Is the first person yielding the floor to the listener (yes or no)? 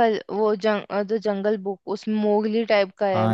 yes